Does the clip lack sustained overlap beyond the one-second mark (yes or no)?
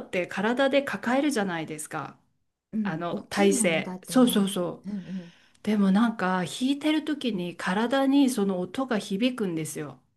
no